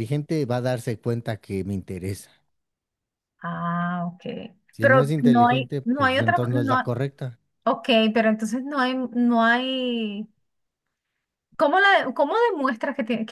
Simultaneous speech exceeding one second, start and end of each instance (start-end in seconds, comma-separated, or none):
4.8-6.9